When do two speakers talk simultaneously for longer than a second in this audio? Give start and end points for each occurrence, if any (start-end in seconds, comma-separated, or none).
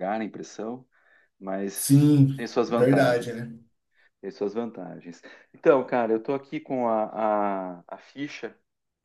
1.7-3.4